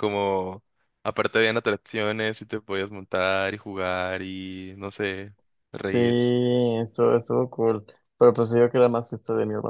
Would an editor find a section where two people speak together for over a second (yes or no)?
no